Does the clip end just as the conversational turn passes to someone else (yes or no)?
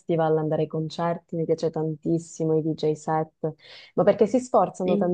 no